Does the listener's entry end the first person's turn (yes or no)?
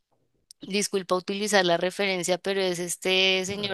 no